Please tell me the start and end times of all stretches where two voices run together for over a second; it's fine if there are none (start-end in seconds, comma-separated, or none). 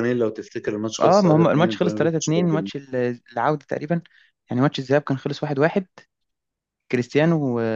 1.0-2.7